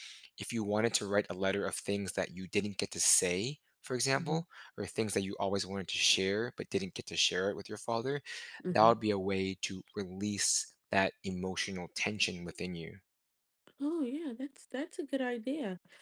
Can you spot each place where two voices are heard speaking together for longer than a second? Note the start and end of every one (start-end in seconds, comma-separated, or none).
none